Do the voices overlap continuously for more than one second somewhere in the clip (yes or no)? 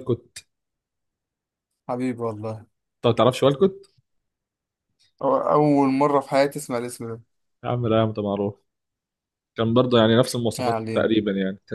no